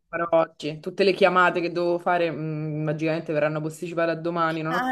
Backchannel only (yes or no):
no